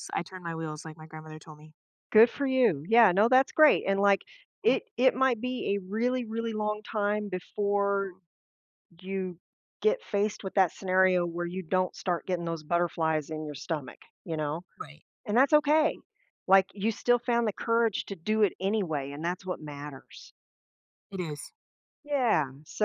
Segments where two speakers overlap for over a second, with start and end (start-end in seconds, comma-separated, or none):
none